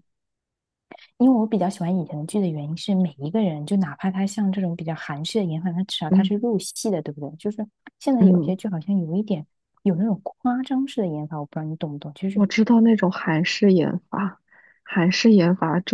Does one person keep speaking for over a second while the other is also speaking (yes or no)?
no